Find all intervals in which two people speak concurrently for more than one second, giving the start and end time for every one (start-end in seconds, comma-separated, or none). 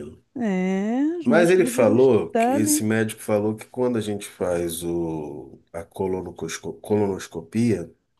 1.2-2.8